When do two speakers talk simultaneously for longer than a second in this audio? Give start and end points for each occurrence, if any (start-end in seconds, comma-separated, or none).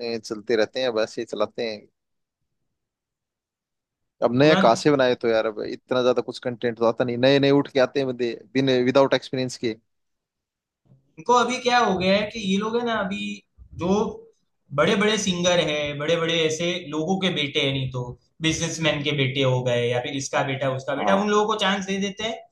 none